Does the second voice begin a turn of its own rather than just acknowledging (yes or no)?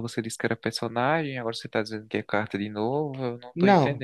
yes